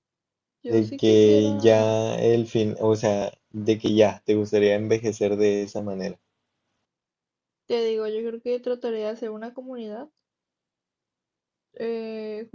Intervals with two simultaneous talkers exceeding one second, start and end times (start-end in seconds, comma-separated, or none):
0.7-1.9